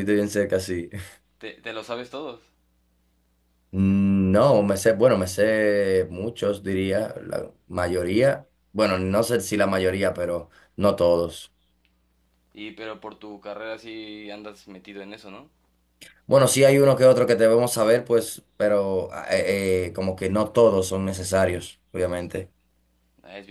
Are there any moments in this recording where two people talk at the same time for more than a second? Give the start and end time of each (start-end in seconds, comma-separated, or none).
none